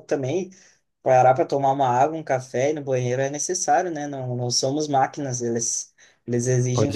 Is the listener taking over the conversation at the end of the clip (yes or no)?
no